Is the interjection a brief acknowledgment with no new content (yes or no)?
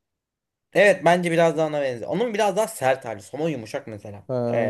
yes